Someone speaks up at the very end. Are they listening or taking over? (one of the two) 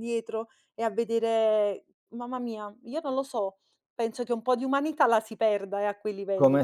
taking over